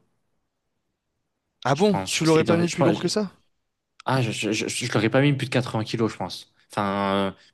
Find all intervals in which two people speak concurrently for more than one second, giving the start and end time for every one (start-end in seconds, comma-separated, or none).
1.7-3.0